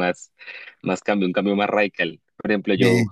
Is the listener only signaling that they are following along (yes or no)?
yes